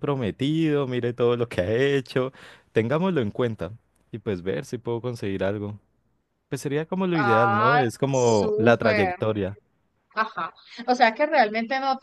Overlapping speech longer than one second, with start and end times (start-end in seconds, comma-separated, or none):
7.2-9.2